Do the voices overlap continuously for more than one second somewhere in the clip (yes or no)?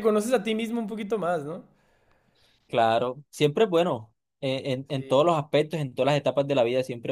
no